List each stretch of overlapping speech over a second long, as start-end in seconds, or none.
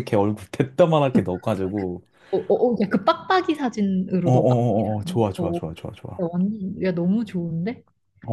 4.2-5.6